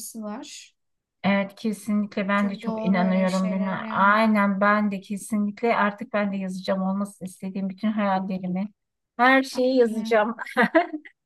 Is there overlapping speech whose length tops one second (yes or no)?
yes